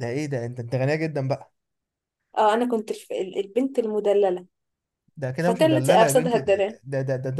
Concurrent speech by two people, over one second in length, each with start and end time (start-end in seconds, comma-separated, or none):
5.4-6.8